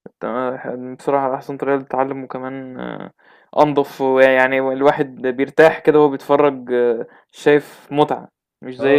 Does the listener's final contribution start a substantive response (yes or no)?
yes